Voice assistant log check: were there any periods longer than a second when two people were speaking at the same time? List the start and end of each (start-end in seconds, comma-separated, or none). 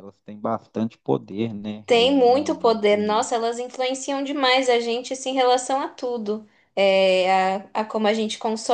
1.9-3.3